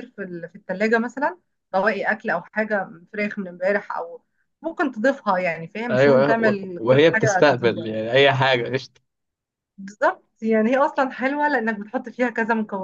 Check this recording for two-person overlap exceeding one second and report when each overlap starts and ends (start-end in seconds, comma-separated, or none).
5.9-7.9